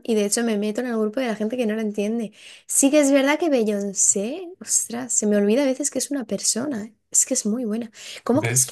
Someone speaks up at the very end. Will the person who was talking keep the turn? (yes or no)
yes